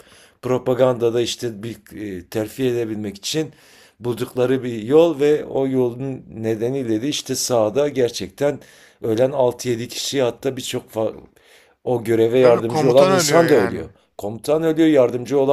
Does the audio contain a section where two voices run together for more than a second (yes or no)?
yes